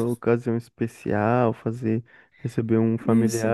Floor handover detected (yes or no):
no